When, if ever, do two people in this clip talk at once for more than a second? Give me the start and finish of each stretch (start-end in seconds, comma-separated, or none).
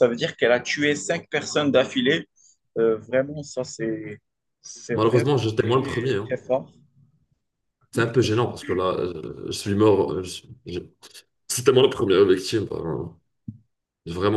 4.9-6.3